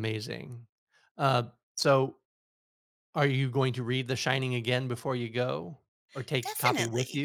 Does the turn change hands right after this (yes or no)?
yes